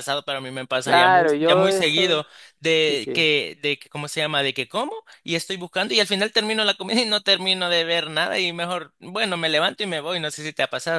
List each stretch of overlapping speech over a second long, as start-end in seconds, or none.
0.8-2.2